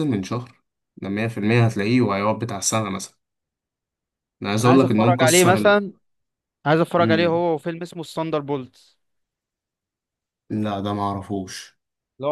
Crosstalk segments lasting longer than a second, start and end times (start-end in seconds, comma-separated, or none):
4.6-5.9